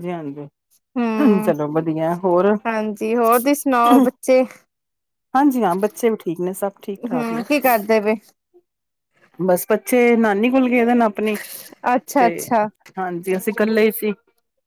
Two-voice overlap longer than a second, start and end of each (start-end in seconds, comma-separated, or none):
none